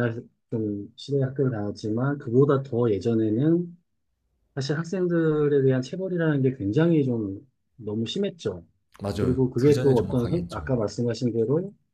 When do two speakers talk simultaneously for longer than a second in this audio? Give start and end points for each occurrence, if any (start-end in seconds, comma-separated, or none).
9.2-10.7